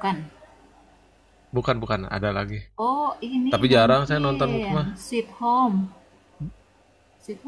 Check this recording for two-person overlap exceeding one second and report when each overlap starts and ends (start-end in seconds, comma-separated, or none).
3.5-4.9